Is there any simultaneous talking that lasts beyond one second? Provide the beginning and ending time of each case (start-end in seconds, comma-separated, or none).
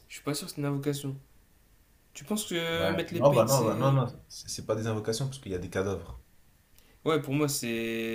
2.7-4.0